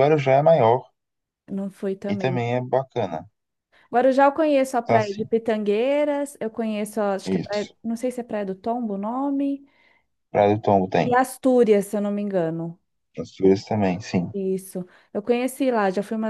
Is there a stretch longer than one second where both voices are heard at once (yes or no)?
no